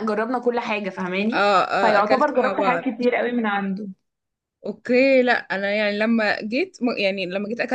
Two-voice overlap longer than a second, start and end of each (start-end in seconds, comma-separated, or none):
1.3-2.9